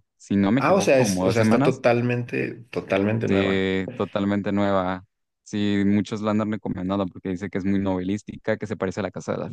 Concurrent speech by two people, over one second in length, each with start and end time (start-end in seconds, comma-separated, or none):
0.6-1.8